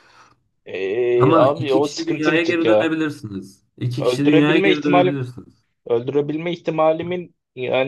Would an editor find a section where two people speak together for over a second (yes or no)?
yes